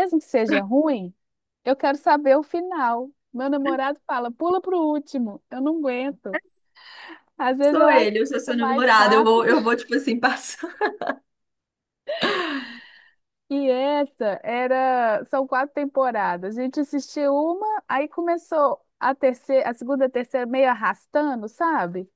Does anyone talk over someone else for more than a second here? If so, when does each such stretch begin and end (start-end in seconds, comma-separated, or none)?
7.6-9.5